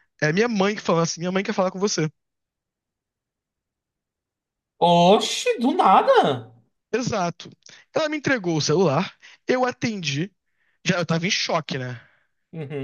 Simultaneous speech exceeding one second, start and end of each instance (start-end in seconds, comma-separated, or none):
none